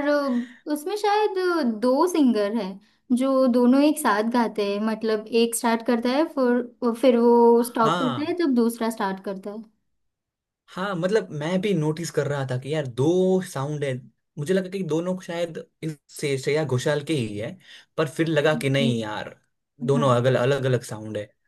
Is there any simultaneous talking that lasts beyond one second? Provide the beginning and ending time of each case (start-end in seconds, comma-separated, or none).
none